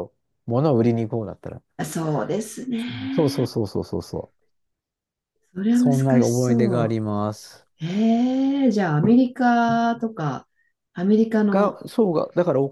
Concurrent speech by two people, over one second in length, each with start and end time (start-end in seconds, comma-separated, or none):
5.7-7.0